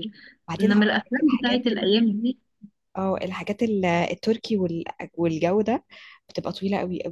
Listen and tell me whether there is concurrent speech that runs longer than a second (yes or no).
yes